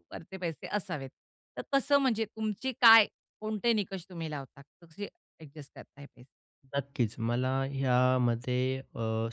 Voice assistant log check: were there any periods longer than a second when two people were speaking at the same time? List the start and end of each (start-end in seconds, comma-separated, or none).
none